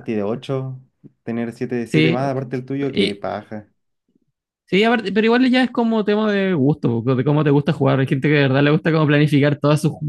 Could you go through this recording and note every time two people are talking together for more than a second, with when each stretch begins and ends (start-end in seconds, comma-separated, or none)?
none